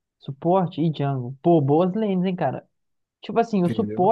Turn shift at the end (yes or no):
no